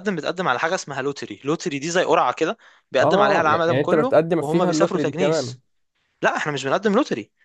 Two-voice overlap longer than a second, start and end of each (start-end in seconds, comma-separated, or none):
3.0-5.6